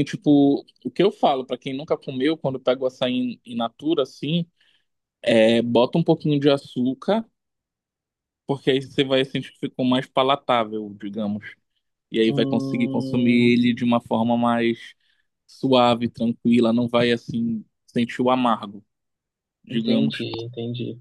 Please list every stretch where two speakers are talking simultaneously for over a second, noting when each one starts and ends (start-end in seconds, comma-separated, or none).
12.3-13.6